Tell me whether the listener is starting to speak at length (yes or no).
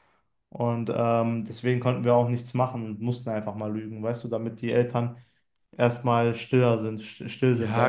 yes